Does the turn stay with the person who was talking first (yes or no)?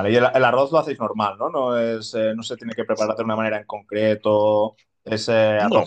yes